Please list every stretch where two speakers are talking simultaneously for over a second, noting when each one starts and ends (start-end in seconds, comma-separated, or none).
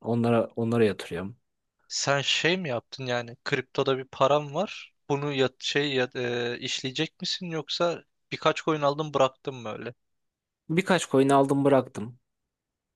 none